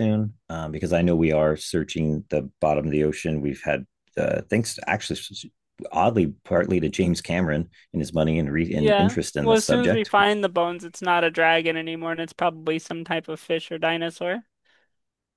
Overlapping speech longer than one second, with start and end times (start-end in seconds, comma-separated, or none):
8.7-10.1